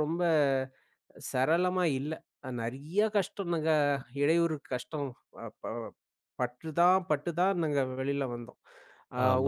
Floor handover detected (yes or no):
yes